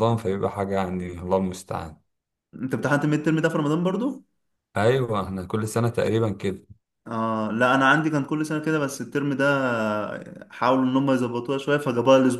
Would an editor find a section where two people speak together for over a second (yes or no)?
no